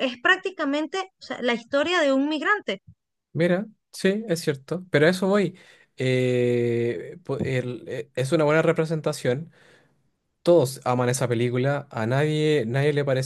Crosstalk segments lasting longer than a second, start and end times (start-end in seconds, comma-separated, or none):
none